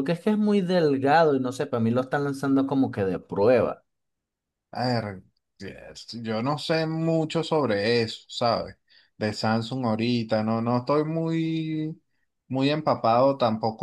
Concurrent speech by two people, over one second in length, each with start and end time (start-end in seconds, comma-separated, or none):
none